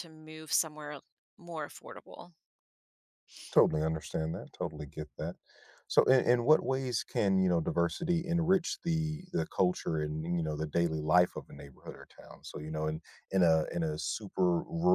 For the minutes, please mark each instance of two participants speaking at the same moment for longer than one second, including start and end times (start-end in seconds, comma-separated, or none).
none